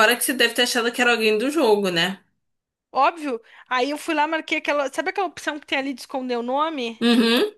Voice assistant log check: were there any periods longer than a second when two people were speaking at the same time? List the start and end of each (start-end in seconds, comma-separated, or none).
none